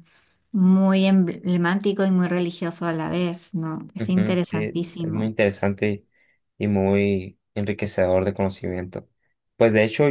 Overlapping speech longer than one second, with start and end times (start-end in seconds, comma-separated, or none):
4.0-5.3